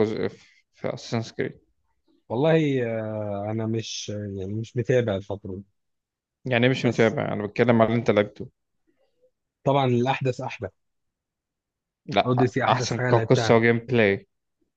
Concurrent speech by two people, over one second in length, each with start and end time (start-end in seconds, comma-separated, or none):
12.2-13.6